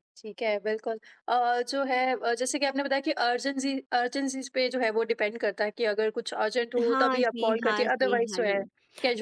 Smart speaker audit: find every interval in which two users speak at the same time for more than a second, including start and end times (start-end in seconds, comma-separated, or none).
6.9-8.6